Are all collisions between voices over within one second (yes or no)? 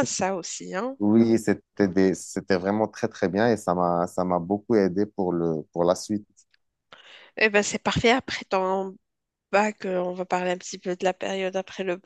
yes